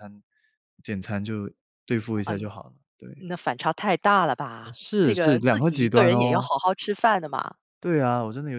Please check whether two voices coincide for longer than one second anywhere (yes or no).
yes